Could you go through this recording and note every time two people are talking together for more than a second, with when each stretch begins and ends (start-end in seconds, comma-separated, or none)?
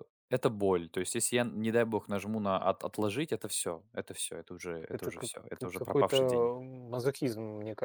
4.9-6.5